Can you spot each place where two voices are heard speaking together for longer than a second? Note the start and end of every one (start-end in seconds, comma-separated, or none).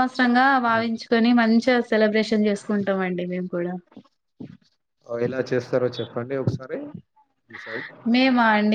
none